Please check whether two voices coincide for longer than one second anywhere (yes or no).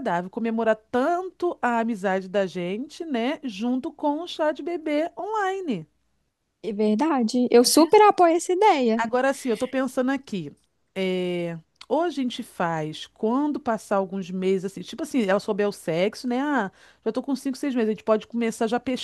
no